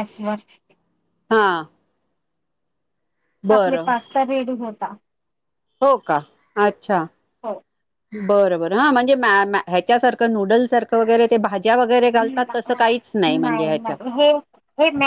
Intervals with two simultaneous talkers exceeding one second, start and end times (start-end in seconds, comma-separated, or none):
none